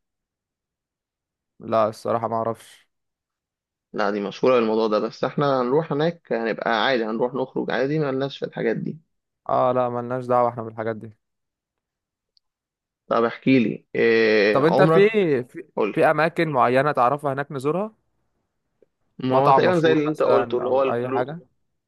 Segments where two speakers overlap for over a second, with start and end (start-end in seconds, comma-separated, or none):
19.3-21.3